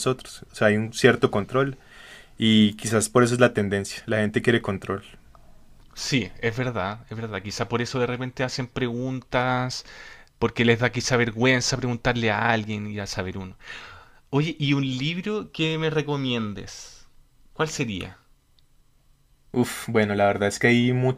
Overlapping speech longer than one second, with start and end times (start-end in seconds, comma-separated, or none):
none